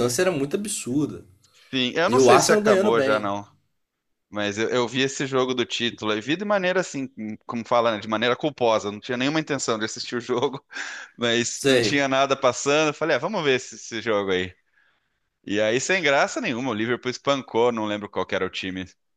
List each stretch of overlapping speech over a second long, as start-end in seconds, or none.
2.1-3.3